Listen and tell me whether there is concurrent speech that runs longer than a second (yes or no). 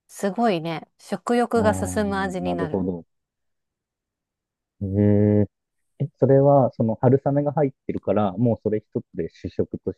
yes